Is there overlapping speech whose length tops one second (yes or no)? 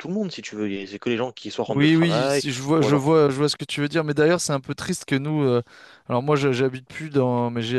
yes